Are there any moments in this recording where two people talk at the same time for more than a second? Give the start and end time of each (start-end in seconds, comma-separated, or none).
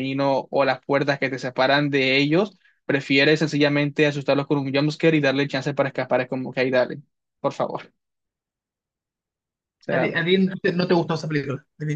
none